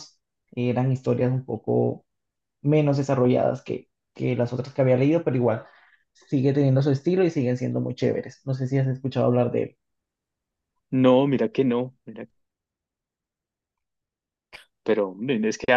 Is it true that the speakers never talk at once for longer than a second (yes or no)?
yes